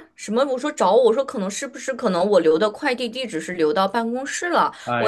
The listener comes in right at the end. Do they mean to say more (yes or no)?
no